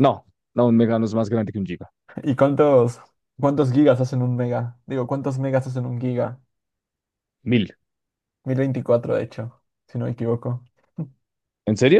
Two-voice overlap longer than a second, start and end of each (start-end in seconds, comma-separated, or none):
none